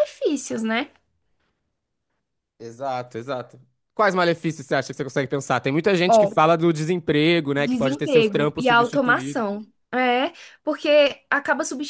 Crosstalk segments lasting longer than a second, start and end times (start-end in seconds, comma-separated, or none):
7.6-9.4